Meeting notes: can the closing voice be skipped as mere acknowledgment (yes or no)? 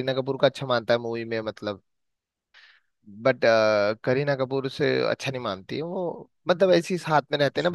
yes